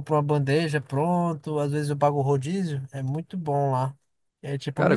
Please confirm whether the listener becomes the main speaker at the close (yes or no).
no